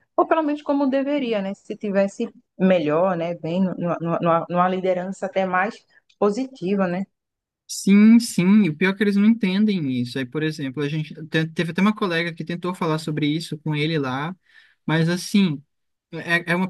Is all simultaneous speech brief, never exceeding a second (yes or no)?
yes